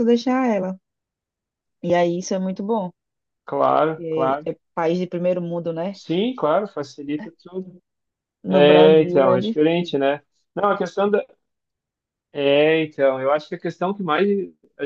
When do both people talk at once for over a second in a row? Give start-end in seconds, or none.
8.5-9.9